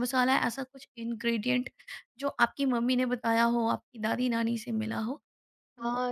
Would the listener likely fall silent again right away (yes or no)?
no